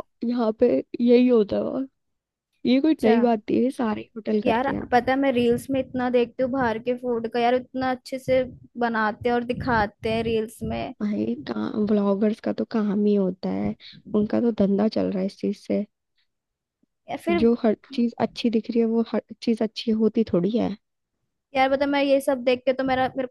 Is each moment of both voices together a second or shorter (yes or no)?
yes